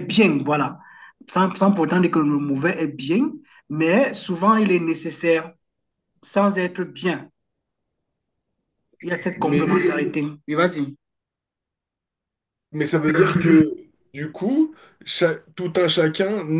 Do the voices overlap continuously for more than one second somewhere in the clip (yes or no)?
no